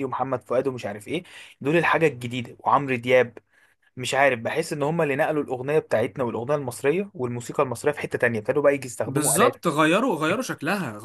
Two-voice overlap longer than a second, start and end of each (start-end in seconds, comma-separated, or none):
none